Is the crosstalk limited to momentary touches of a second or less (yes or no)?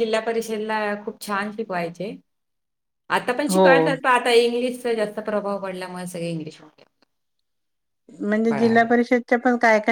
yes